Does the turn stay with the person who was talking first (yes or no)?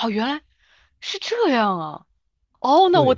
yes